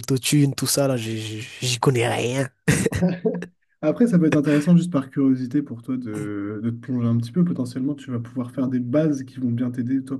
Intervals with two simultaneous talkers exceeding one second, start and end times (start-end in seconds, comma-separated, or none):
none